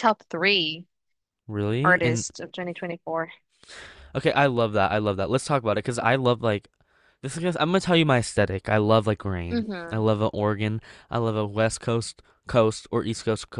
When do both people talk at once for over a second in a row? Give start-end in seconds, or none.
none